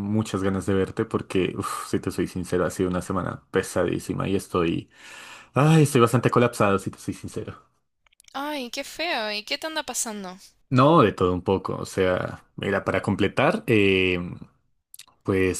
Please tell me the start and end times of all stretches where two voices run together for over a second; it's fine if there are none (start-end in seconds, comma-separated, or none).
none